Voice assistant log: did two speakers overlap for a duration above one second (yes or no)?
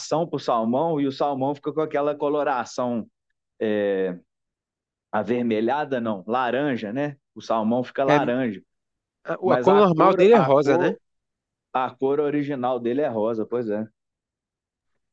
yes